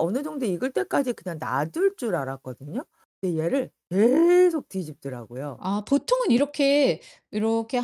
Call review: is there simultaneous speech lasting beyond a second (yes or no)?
no